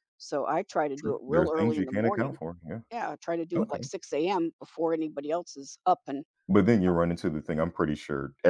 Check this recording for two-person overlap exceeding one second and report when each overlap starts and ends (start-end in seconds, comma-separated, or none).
1.0-2.4